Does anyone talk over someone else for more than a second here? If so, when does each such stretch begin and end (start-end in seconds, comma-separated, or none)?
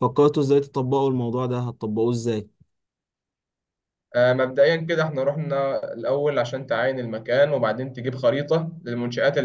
none